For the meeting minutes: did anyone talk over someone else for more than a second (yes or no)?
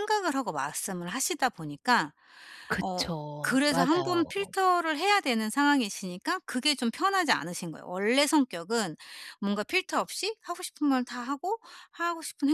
yes